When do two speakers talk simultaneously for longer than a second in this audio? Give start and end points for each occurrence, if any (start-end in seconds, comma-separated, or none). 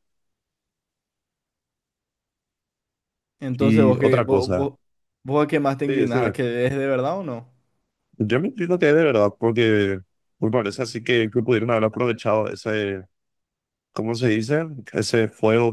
3.5-4.7